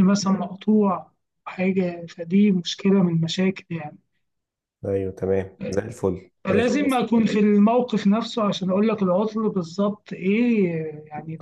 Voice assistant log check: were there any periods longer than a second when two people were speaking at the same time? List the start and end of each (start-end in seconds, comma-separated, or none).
none